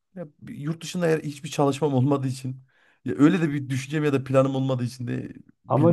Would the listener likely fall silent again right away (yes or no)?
no